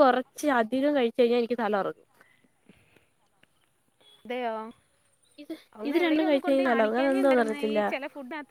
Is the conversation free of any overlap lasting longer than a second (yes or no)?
no